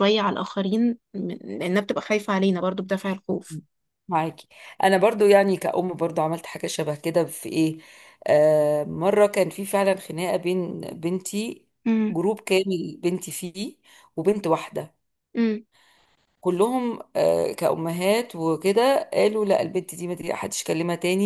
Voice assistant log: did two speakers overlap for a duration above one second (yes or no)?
no